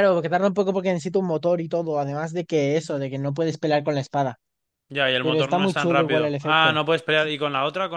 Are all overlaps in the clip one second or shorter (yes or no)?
no